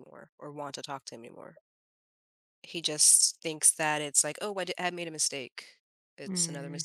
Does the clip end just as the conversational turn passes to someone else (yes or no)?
yes